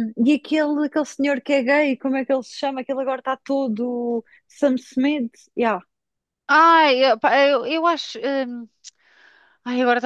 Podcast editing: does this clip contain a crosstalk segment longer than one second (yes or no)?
no